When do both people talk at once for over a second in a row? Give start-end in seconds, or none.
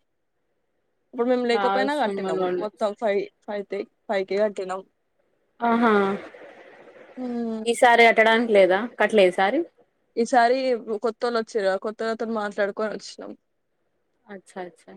1.5-2.9